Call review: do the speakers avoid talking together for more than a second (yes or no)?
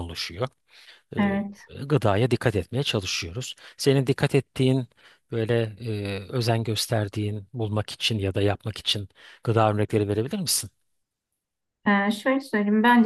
yes